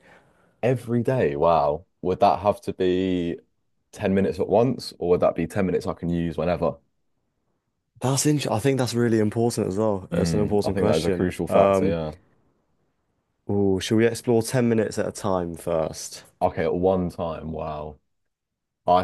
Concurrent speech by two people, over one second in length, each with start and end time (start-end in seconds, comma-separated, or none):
10.1-12.0